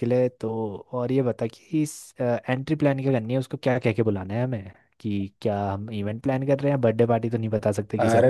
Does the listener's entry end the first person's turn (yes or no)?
yes